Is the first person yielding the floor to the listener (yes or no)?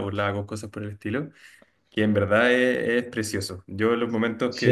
yes